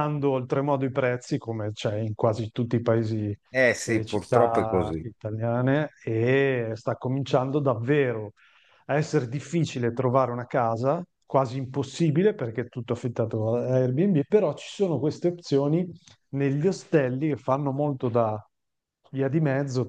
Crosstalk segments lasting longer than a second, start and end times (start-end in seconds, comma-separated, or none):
3.9-5.1